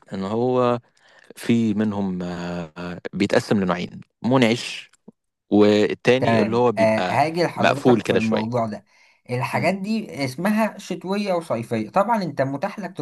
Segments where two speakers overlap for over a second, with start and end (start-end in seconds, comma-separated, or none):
6.8-8.6